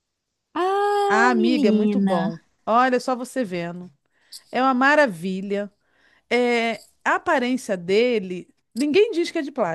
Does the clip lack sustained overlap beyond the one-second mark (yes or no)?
no